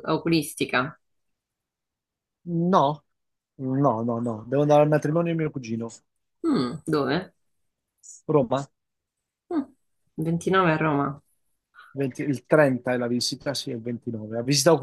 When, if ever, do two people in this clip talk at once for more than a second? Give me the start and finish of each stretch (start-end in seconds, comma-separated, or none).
none